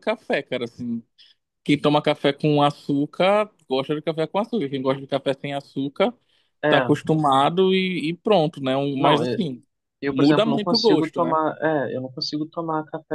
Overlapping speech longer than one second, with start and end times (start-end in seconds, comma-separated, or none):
10.1-11.4